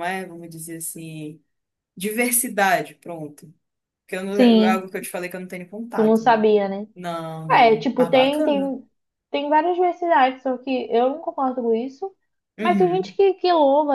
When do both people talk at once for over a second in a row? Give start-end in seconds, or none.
7.5-8.8